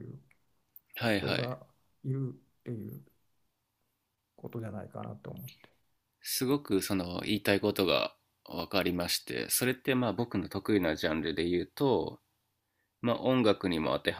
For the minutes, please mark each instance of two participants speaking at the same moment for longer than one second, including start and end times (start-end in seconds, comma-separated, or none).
none